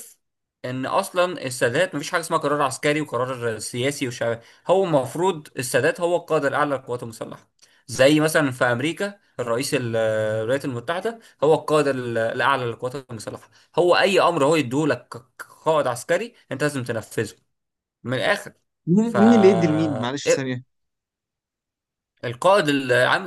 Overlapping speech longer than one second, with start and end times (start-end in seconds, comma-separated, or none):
none